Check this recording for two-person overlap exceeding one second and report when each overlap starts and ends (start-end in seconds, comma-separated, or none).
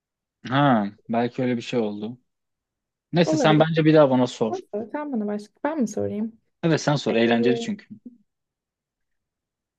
none